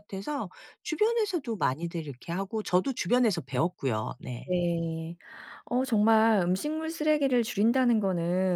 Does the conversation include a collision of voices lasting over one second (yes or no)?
no